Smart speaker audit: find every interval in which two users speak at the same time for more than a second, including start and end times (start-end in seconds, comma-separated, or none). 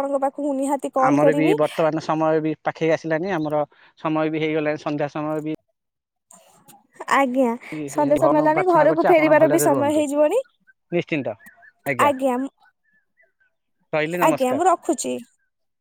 8.2-10.0